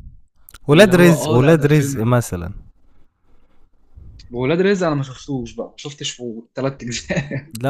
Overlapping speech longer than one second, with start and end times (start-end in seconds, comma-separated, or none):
0.7-2.0